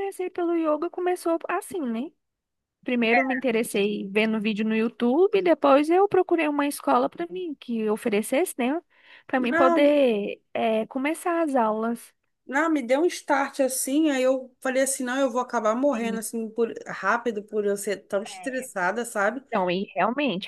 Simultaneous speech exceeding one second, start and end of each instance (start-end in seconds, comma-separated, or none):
none